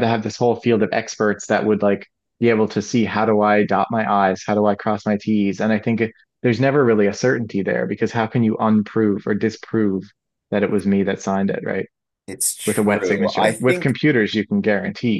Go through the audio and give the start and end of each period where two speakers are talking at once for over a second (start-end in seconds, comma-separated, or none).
12.7-13.9